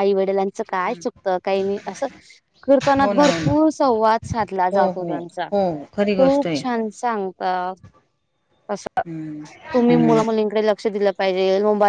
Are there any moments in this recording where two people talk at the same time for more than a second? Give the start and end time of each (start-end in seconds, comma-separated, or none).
none